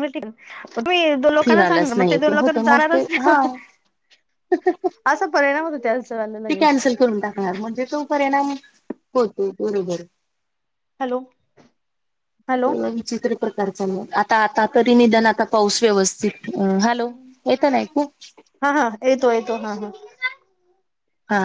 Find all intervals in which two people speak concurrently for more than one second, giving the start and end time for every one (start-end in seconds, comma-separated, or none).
1.4-3.3